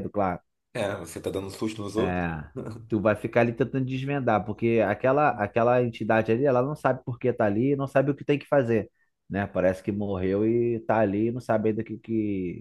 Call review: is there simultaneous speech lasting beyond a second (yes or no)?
no